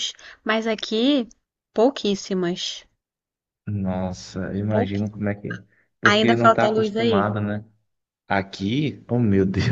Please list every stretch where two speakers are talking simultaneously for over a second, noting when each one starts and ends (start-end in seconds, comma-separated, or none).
6.0-7.3